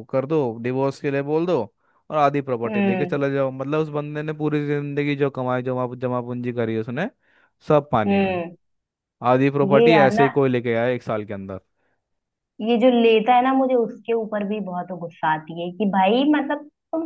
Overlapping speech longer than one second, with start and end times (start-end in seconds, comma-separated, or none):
none